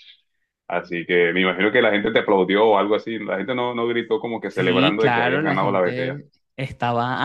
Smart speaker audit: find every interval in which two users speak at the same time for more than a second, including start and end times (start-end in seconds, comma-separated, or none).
4.5-6.2